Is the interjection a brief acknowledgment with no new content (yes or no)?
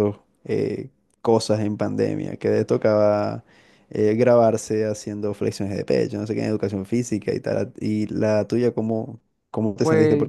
yes